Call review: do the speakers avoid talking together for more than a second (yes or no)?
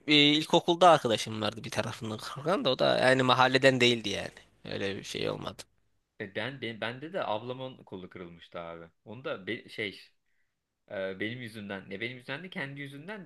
yes